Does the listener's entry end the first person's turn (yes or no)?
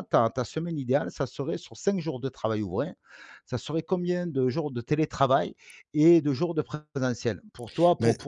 no